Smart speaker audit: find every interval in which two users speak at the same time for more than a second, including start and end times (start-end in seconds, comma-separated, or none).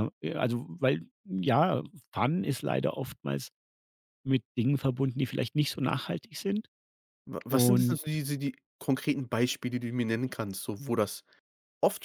none